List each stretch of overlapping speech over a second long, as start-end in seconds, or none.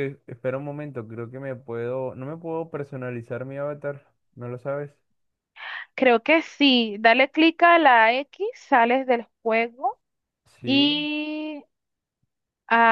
none